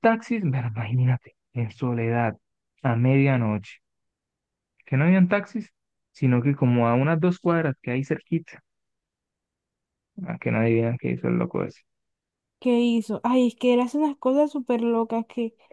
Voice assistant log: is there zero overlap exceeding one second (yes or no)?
yes